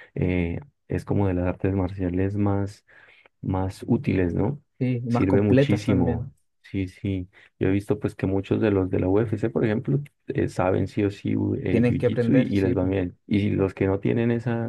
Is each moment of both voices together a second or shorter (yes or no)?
no